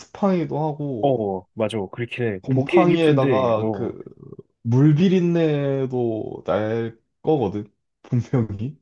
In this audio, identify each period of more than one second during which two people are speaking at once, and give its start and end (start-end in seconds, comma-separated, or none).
2.4-4.0